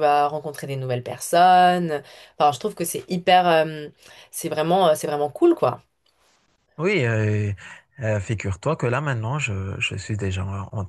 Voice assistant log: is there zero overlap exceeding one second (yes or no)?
yes